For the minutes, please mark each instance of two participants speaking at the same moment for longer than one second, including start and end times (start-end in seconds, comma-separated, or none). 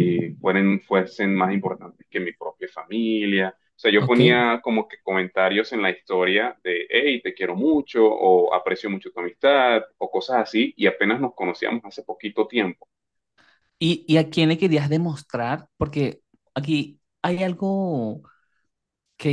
none